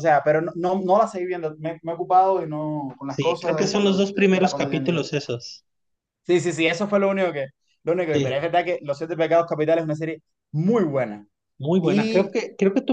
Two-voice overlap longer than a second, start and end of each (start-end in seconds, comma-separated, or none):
3.1-5.0